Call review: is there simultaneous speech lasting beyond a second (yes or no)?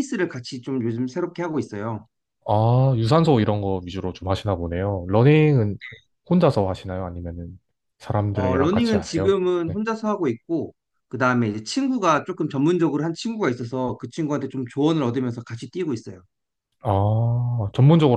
yes